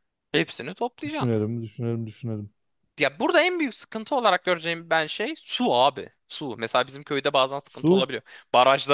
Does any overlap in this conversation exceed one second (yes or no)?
no